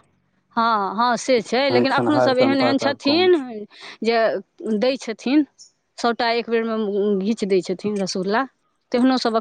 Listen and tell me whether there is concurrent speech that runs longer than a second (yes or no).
yes